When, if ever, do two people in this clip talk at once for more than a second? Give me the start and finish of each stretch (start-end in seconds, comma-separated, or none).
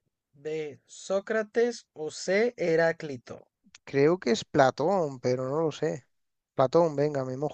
none